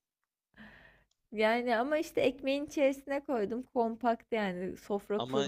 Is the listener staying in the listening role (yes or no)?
no